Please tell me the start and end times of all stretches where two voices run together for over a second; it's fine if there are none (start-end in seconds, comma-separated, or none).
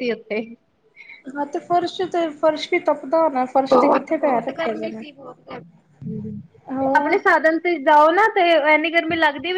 3.7-5.0